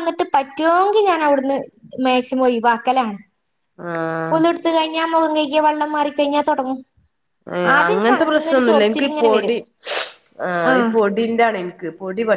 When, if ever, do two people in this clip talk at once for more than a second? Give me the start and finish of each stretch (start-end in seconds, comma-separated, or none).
7.8-9.6